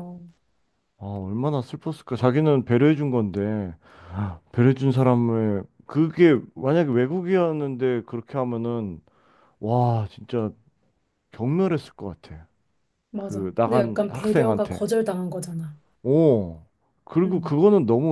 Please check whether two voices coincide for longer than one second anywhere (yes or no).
yes